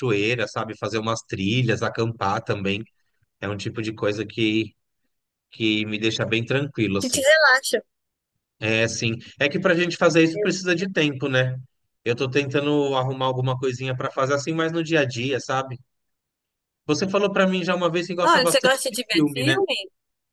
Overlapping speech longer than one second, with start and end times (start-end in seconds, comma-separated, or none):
18.3-19.6